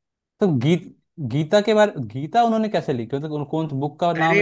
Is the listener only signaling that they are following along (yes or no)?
no